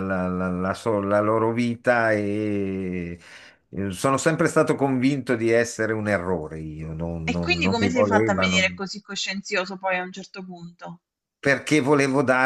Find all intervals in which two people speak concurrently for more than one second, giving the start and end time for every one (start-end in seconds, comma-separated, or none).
7.3-8.8